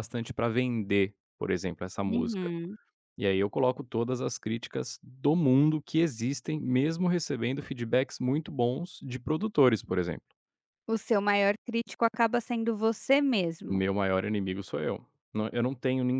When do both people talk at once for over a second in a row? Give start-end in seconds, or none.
none